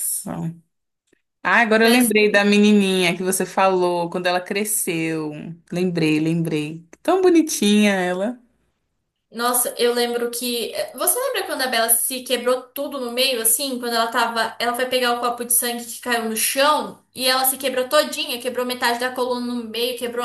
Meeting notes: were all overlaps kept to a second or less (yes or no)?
yes